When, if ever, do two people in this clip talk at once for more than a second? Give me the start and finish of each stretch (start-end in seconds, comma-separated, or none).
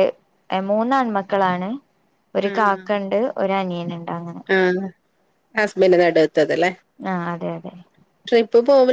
none